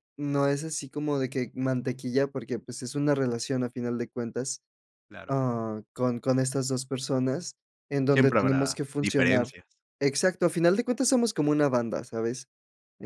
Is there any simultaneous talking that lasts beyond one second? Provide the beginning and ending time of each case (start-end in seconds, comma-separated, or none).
8.1-9.5